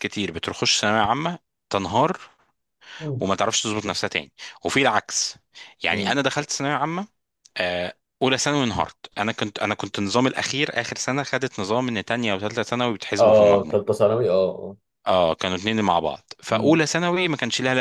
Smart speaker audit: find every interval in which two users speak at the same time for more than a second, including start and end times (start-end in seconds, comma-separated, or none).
none